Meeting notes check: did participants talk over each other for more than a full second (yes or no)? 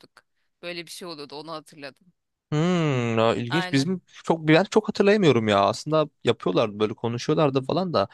no